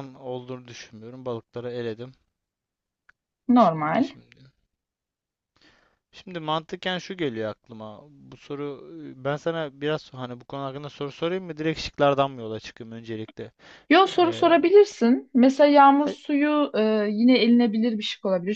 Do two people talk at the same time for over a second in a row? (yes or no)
no